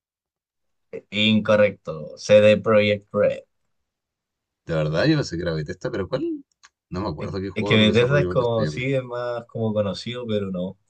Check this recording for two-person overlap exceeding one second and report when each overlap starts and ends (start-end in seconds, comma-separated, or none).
7.2-8.9